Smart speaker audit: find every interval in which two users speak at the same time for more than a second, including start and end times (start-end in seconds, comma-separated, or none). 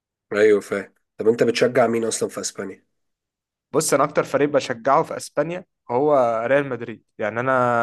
none